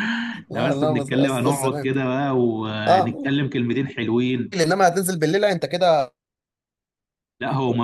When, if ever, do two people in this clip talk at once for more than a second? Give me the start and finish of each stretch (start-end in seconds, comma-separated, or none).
0.5-1.9